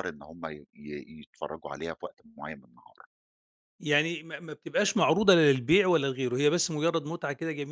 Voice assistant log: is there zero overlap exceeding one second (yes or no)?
yes